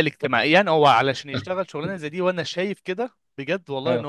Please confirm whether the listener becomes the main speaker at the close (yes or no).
no